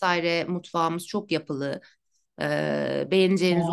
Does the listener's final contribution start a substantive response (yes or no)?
no